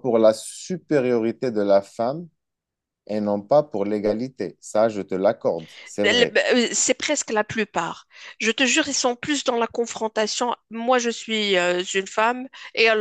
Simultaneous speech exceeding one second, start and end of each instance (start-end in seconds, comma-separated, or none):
none